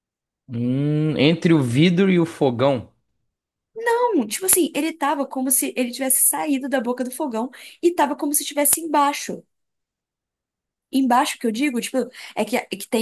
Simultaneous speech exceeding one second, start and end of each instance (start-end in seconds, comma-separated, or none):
none